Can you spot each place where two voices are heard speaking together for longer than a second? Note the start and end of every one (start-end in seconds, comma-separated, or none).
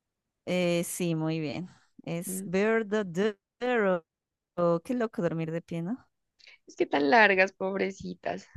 none